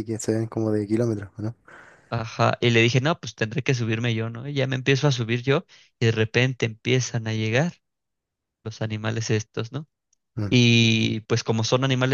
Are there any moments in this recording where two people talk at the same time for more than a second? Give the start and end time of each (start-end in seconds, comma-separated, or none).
none